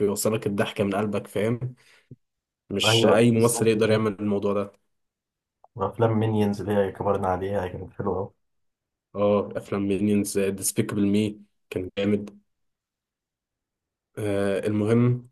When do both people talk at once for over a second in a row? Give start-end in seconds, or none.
2.8-4.1